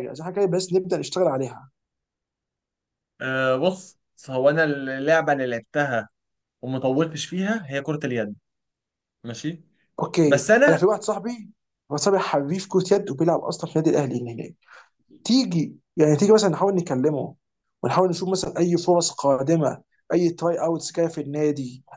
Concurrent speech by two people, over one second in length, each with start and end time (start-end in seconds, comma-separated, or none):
none